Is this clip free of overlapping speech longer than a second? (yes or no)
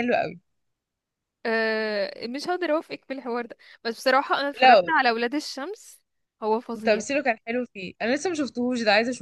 yes